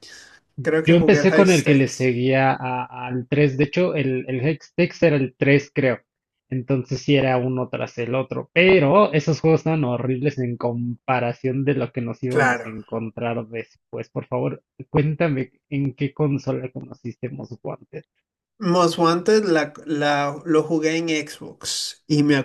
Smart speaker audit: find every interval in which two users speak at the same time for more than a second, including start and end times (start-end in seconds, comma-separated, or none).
0.8-2.1